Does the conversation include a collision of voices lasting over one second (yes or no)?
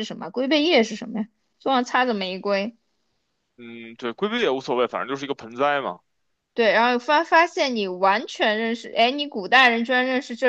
no